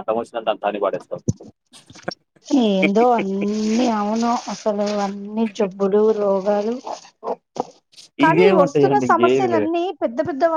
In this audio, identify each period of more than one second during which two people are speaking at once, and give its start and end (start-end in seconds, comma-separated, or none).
8.3-9.7